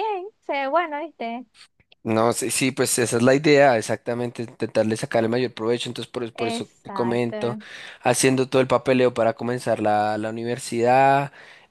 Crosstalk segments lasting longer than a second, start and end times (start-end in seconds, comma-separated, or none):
6.4-7.6